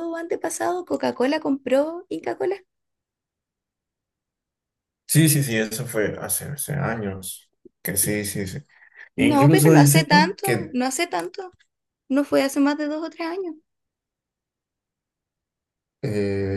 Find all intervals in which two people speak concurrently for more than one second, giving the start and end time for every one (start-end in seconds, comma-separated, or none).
9.2-10.8